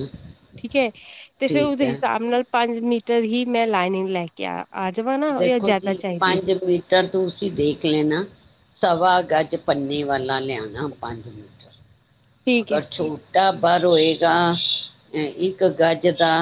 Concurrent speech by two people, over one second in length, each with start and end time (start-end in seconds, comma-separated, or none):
none